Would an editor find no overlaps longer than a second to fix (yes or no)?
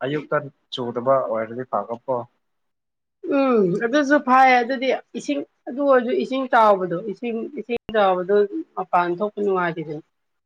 yes